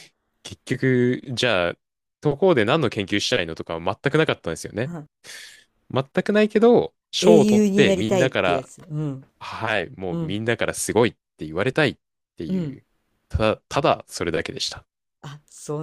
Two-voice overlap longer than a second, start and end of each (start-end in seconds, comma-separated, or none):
7.2-8.7